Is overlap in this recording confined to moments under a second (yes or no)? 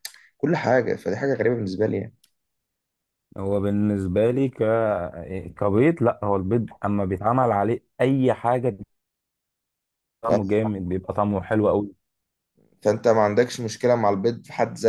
yes